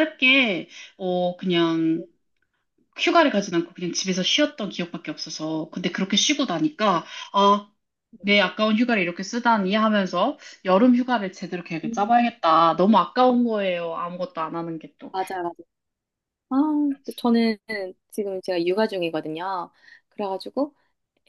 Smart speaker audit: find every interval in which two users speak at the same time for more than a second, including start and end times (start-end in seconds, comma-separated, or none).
none